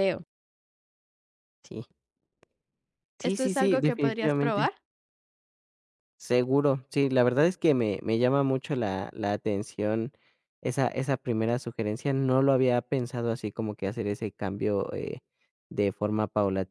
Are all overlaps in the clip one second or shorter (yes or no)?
no